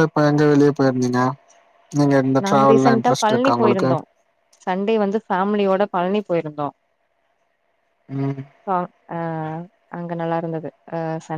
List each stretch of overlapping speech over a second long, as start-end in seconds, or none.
2.4-3.9